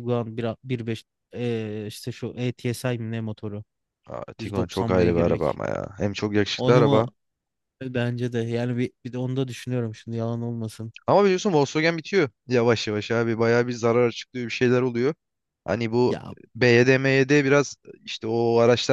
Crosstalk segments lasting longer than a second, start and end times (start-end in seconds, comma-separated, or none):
4.4-5.6